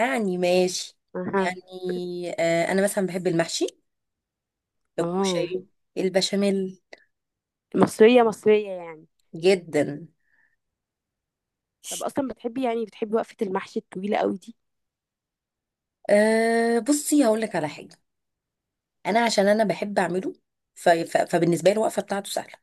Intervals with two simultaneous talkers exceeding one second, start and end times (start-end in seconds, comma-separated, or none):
none